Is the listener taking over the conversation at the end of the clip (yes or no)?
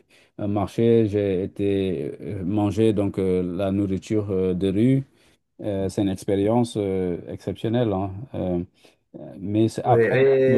yes